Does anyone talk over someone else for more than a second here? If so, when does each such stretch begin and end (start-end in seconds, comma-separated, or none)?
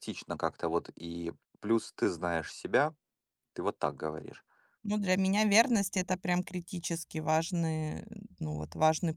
none